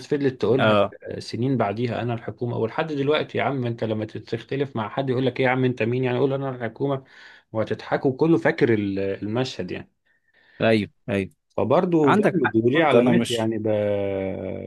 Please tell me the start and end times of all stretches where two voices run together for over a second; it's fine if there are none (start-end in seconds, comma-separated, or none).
12.0-13.5